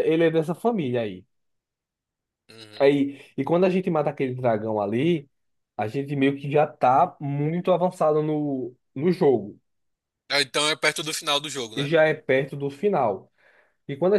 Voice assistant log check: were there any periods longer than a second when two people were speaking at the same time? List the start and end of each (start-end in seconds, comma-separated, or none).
none